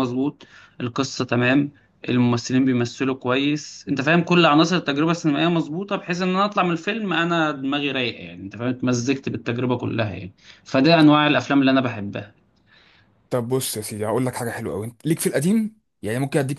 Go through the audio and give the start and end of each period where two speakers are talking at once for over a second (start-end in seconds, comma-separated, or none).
none